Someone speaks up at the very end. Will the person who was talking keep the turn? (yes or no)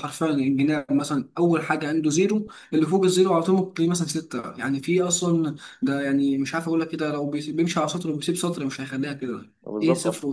yes